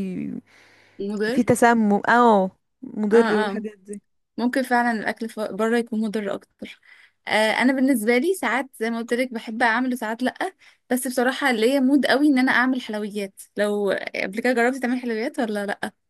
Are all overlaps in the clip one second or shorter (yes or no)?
yes